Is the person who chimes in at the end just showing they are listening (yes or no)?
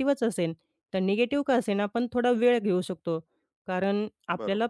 yes